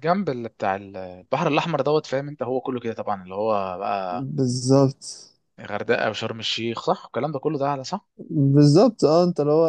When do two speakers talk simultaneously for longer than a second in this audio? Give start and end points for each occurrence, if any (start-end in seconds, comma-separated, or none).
none